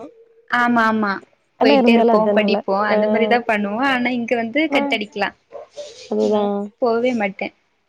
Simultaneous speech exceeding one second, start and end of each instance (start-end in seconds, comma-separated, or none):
1.6-3.5